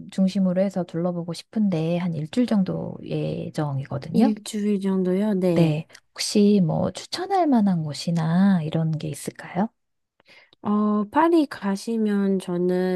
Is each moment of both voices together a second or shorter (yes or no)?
yes